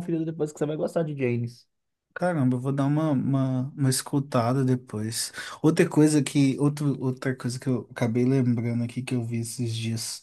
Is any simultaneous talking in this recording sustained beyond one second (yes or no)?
no